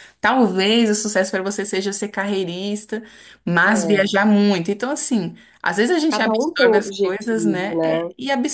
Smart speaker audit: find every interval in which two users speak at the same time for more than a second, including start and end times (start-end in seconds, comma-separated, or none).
6.1-8.0